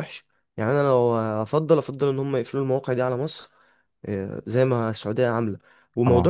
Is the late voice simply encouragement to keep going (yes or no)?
yes